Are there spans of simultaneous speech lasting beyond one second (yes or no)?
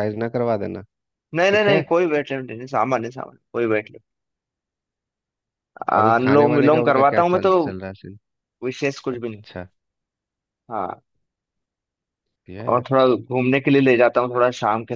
yes